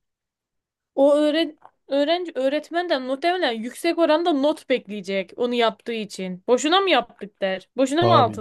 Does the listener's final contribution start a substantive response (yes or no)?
yes